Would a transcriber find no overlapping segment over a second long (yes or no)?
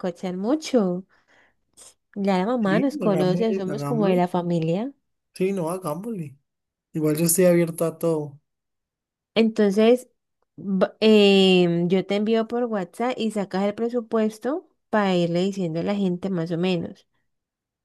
no